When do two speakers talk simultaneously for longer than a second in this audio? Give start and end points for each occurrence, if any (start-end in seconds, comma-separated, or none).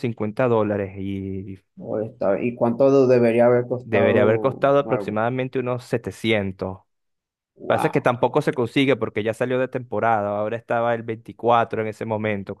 3.8-5.2